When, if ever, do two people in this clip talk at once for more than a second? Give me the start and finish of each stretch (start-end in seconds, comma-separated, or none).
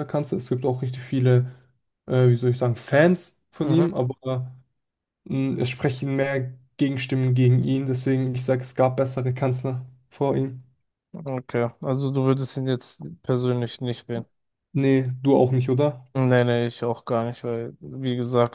none